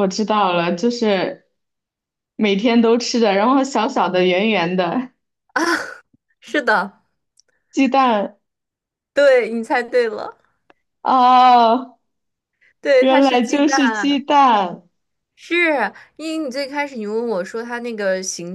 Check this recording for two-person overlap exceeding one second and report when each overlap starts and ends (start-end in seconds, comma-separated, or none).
13.0-14.2